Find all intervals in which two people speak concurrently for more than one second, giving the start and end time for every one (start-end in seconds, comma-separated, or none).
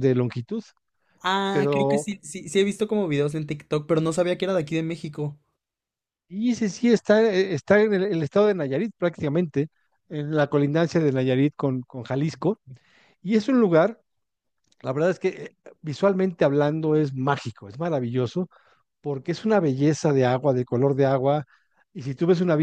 none